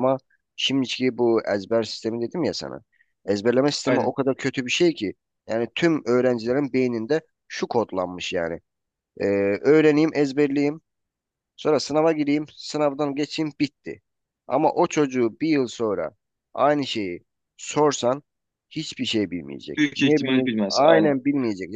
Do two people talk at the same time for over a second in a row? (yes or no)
yes